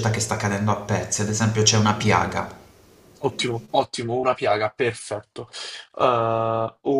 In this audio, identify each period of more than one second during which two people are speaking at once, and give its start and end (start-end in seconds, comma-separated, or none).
none